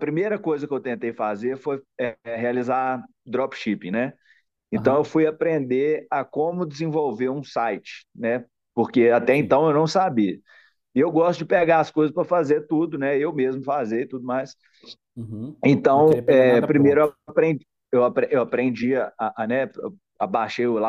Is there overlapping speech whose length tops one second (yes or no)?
yes